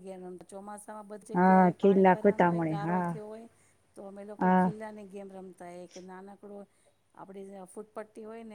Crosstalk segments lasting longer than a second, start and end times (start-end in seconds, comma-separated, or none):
1.4-3.1